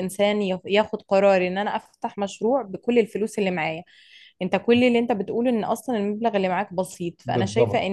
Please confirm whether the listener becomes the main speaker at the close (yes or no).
no